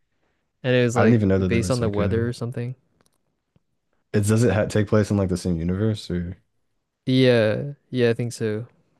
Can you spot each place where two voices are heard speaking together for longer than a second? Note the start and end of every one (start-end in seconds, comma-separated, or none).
0.9-2.3